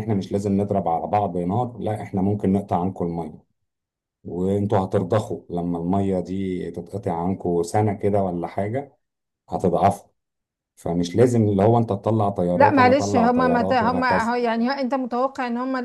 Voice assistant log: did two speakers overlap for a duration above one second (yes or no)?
yes